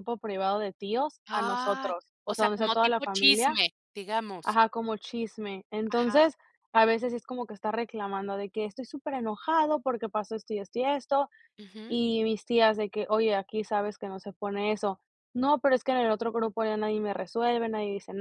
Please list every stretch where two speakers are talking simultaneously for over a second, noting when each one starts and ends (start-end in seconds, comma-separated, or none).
1.3-3.5